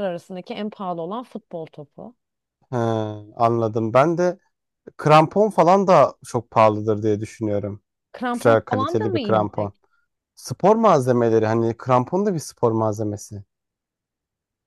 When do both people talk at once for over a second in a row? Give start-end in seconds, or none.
8.3-9.7